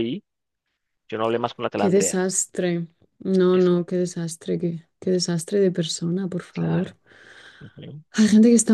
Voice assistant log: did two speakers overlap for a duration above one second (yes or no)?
no